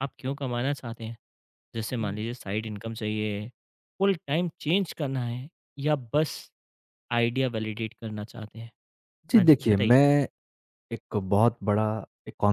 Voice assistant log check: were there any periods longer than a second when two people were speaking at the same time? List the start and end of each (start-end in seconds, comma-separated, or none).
none